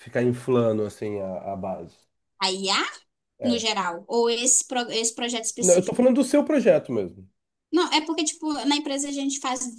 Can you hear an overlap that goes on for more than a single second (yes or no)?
no